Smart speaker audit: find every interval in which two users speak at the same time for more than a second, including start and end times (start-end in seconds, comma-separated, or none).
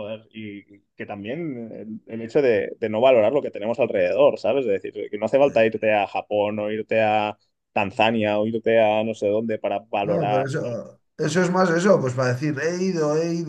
none